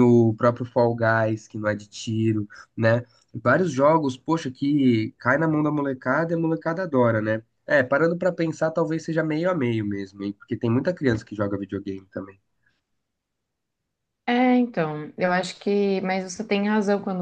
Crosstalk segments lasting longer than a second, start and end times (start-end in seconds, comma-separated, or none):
none